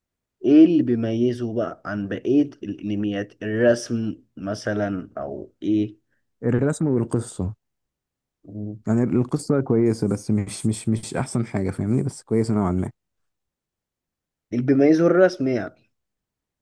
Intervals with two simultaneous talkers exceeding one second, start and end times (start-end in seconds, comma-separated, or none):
none